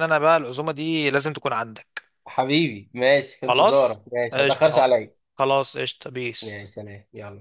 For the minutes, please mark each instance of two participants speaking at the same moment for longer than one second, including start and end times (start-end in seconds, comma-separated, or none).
3.5-4.9